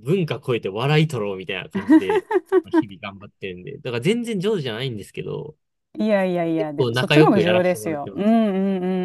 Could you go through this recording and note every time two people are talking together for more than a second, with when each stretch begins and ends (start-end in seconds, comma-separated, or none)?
6.6-8.3